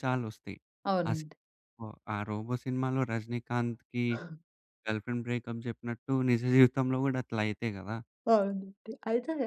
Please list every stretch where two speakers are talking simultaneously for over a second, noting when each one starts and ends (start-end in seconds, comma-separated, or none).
none